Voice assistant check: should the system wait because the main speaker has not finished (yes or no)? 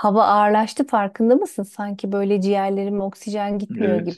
no